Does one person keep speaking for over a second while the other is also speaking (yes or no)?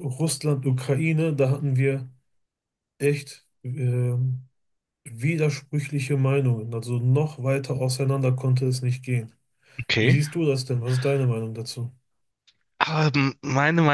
no